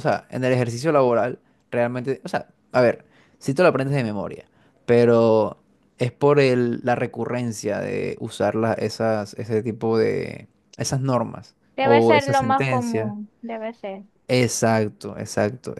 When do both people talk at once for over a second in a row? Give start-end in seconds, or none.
11.8-13.1